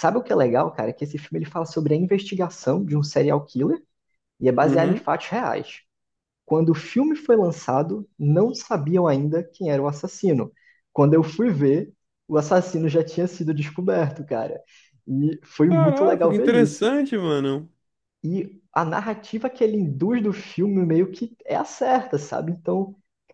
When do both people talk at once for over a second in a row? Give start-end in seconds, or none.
15.7-16.9